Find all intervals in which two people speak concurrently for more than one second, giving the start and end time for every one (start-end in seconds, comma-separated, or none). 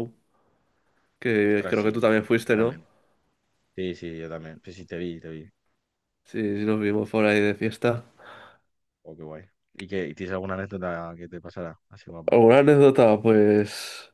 1.4-2.8